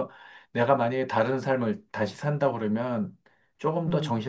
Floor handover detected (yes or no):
no